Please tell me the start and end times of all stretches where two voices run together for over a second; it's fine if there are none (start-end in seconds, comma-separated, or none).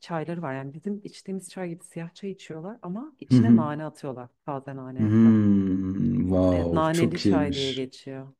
6.5-7.9